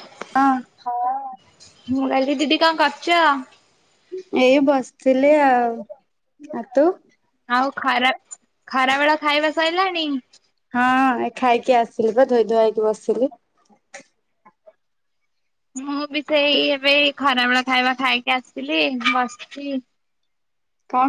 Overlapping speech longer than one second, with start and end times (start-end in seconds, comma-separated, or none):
none